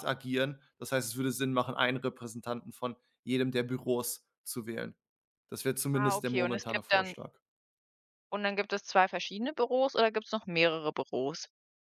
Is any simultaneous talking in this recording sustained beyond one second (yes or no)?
yes